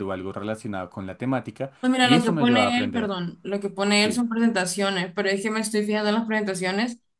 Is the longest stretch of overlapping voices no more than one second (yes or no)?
no